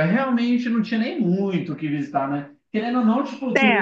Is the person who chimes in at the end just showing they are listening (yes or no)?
yes